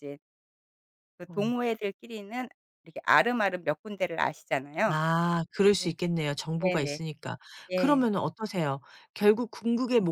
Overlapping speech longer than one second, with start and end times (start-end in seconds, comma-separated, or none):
none